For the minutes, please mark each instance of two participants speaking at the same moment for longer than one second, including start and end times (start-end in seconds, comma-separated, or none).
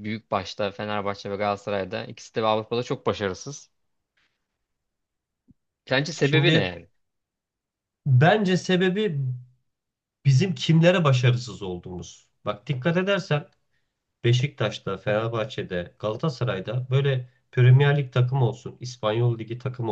none